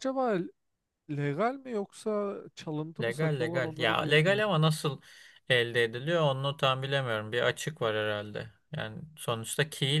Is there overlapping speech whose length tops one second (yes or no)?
yes